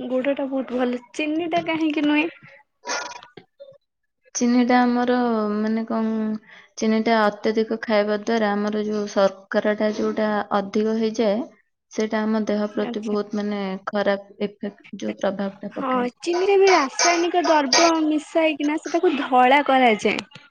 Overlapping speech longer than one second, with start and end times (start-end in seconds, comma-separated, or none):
none